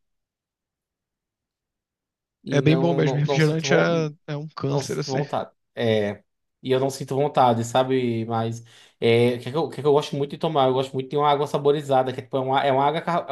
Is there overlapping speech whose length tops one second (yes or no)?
yes